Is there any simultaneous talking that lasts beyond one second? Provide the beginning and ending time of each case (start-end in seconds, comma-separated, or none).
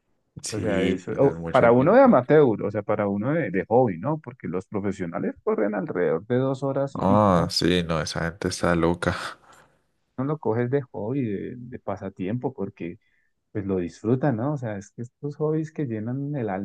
0.5-2.2